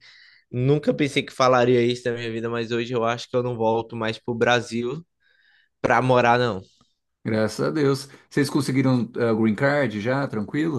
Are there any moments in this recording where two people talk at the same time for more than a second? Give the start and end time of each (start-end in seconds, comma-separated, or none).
none